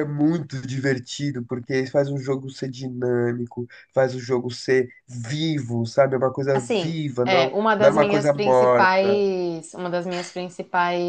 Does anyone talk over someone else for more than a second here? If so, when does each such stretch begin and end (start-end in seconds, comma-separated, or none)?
6.5-9.2